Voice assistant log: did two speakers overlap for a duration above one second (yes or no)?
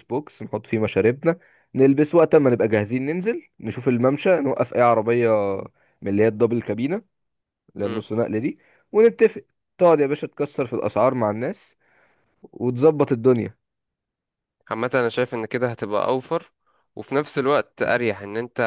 no